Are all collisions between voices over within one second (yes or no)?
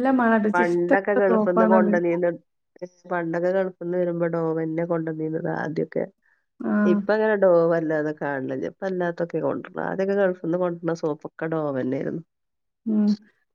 no